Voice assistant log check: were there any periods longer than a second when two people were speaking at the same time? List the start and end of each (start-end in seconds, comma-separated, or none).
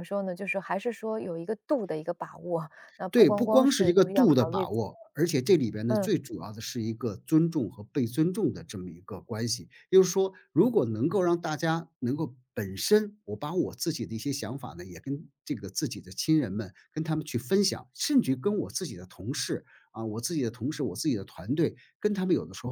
3.1-4.7